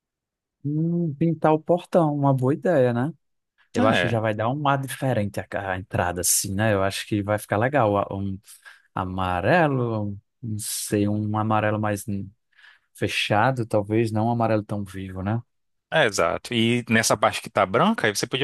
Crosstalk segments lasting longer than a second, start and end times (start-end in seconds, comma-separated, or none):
none